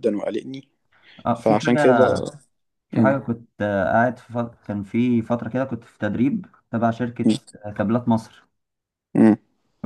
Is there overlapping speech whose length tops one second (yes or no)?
no